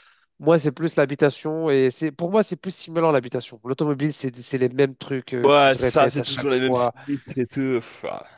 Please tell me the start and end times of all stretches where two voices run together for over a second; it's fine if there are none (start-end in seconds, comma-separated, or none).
5.4-6.9